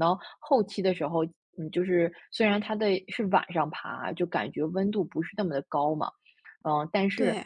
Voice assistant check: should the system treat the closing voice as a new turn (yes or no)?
no